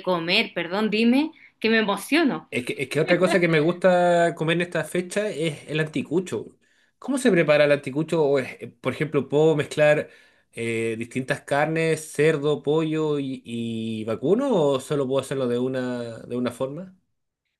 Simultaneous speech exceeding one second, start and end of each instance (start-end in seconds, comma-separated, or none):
none